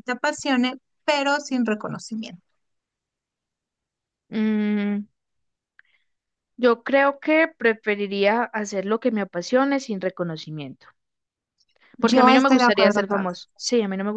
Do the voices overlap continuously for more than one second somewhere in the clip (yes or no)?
yes